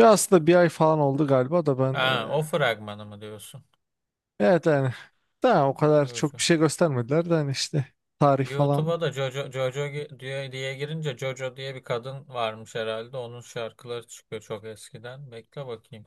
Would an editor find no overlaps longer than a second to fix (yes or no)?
yes